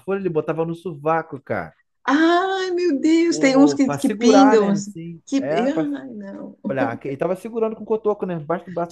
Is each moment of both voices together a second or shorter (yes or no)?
no